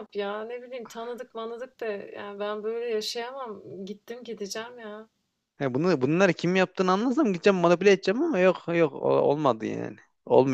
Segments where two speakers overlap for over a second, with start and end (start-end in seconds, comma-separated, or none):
none